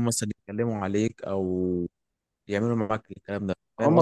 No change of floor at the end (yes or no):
no